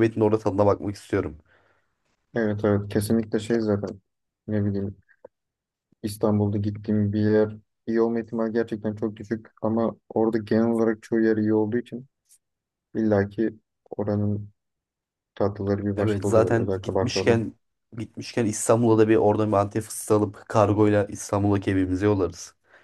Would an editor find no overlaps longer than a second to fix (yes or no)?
no